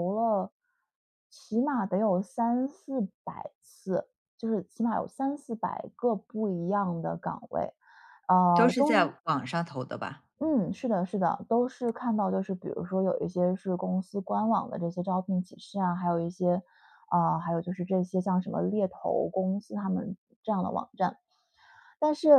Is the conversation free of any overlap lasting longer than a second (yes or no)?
yes